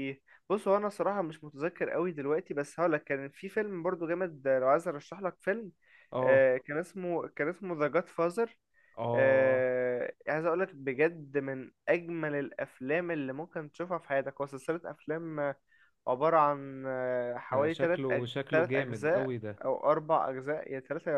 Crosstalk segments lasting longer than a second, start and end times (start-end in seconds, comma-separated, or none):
17.5-19.6